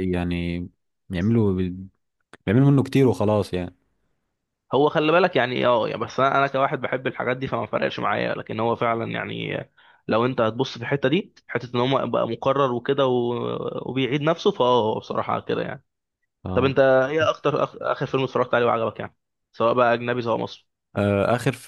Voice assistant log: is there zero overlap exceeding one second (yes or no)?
yes